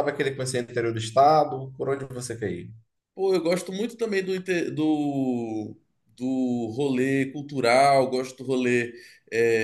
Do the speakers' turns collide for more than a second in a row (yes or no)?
no